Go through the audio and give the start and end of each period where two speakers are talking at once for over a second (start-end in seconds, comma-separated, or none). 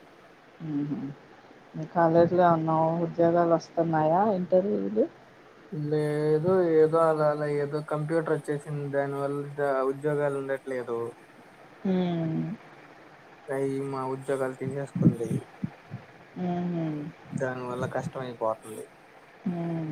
none